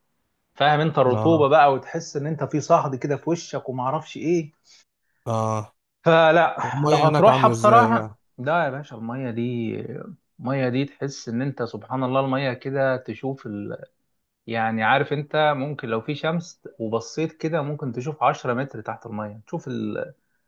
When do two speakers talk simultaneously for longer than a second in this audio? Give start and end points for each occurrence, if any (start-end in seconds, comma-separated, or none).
6.6-8.2